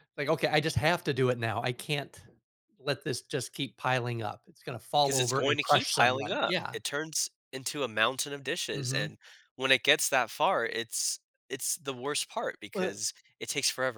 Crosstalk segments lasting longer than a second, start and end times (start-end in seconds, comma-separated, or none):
5.0-6.8